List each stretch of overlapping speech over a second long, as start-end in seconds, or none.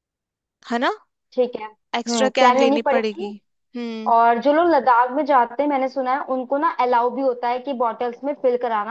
2.0-3.3